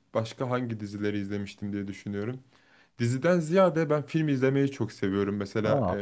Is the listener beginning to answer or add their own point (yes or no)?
no